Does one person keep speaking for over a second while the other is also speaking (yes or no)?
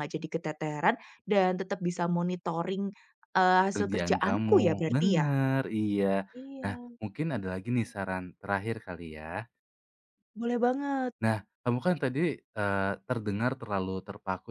yes